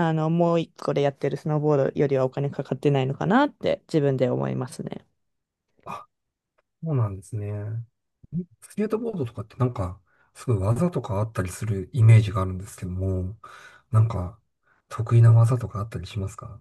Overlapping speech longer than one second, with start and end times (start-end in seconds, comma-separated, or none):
none